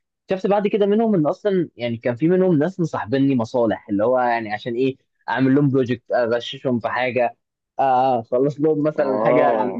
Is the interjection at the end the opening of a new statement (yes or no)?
no